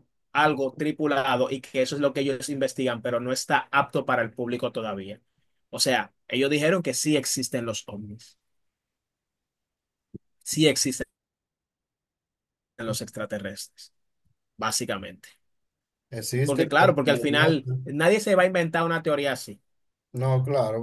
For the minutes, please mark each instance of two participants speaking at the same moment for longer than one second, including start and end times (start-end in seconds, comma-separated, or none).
16.4-17.8